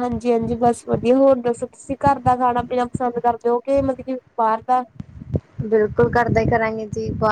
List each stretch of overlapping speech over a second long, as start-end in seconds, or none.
none